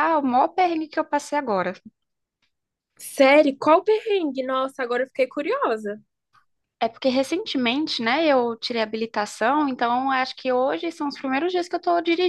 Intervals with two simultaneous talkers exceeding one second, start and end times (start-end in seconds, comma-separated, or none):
none